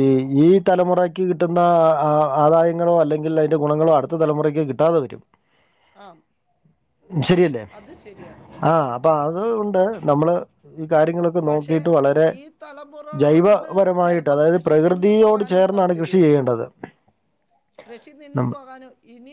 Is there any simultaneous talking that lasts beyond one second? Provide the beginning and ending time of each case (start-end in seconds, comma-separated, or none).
13.2-16.4